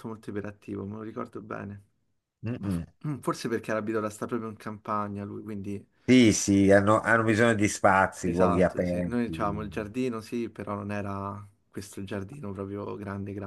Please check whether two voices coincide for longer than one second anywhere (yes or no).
yes